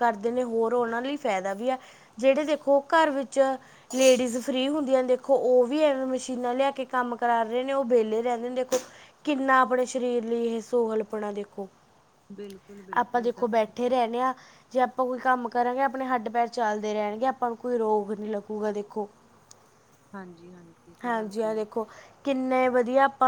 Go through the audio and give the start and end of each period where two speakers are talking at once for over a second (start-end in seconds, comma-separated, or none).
none